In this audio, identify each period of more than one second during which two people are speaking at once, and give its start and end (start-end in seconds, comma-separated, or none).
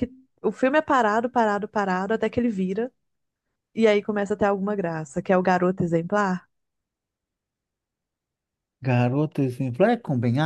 none